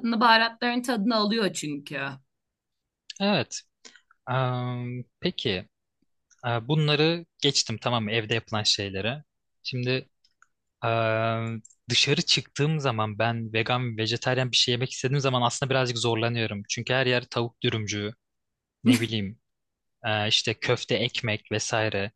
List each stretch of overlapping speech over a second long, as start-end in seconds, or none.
none